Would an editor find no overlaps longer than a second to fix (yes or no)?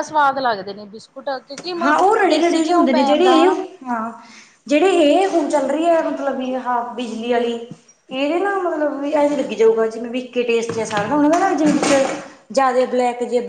no